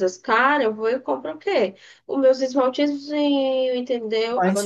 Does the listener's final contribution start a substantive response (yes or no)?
yes